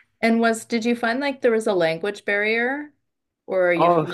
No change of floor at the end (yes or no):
no